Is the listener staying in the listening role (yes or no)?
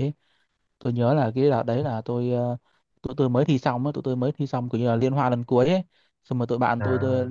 yes